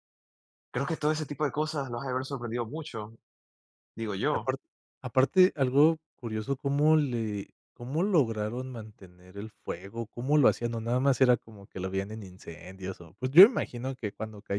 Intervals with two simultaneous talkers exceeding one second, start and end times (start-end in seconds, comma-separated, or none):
none